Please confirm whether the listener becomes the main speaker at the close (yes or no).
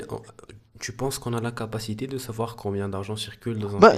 yes